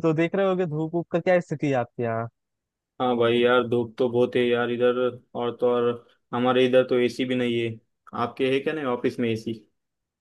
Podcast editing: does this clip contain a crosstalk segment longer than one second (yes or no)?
no